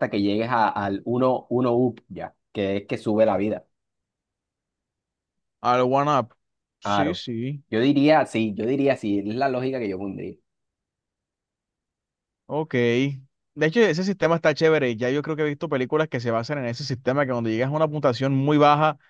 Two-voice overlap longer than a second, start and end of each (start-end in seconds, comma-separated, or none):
none